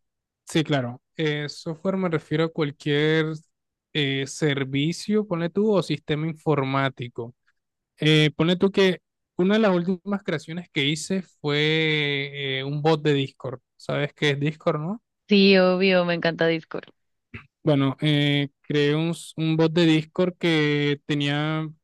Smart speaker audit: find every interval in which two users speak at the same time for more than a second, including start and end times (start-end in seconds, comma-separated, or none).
none